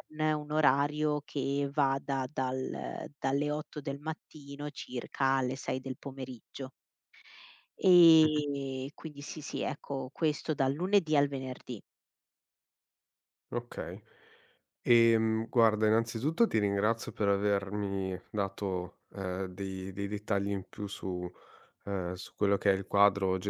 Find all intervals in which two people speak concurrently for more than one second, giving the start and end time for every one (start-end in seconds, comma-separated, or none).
none